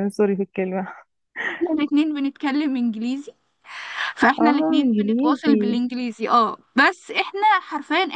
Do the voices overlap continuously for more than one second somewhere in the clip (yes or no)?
yes